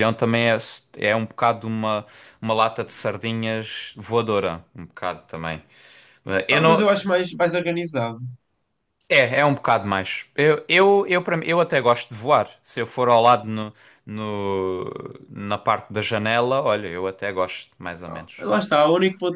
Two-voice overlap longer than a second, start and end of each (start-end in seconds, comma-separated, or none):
none